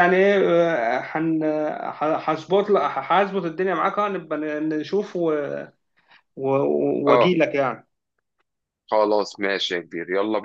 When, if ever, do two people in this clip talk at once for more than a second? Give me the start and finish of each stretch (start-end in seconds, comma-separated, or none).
none